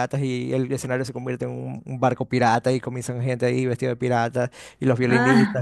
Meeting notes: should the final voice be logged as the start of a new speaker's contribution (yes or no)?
no